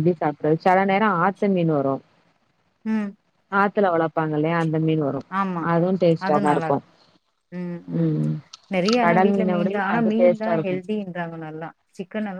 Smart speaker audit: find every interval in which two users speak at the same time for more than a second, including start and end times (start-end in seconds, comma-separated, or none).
9.0-10.8